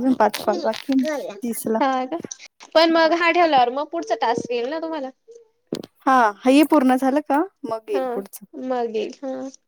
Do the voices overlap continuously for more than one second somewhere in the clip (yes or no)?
no